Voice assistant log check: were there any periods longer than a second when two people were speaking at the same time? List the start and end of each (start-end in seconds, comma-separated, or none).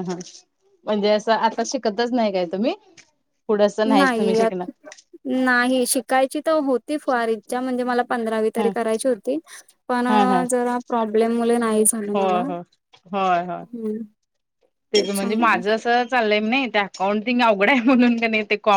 none